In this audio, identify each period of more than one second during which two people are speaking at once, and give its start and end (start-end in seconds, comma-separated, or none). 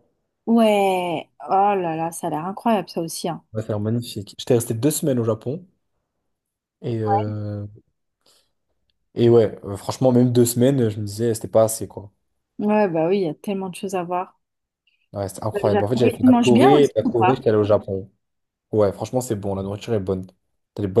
15.5-17.4